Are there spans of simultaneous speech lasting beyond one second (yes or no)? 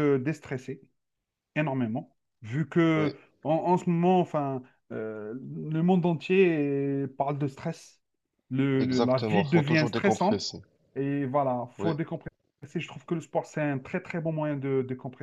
yes